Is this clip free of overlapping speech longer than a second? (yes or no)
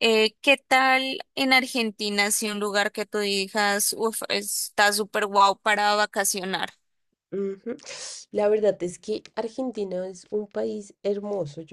yes